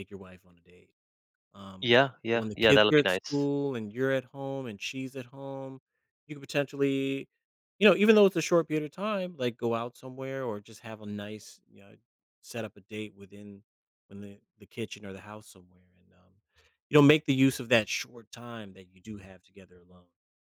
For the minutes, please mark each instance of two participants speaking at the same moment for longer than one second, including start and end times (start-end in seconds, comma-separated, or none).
1.8-3.5